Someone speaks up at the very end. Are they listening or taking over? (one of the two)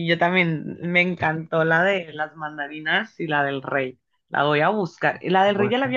listening